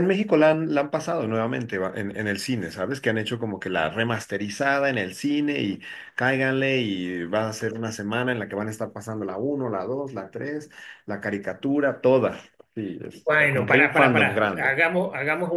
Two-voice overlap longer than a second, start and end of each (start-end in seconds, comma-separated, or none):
13.2-14.7